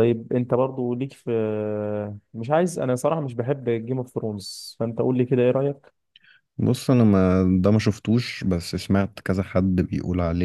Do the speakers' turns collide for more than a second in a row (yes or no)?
no